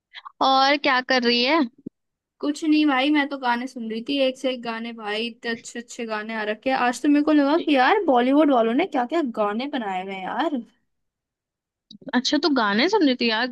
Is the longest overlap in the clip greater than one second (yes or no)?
no